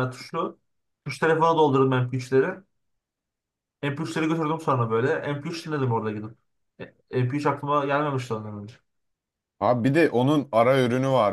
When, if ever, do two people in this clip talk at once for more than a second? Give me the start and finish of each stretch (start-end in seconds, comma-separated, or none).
none